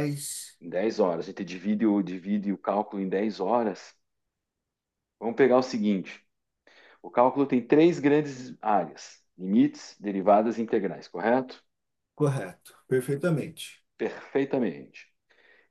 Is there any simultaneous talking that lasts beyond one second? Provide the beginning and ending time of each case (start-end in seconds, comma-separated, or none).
none